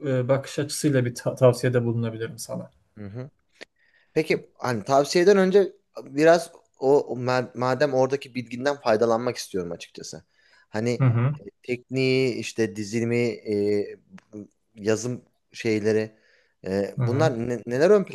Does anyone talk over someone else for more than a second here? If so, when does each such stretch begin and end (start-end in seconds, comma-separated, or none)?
none